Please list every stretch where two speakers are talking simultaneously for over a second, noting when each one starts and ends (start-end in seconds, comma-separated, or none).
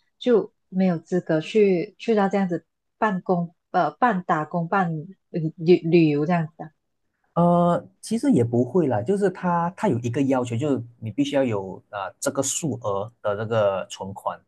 none